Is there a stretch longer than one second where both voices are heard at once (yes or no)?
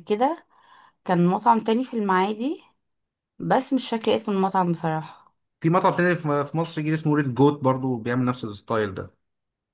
no